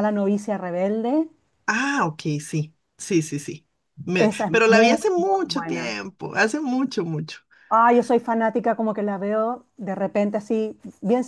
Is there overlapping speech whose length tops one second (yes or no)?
yes